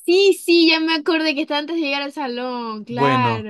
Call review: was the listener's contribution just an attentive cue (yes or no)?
no